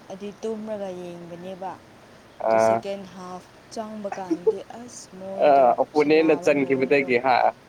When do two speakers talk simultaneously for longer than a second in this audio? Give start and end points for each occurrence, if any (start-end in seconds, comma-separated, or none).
5.5-7.1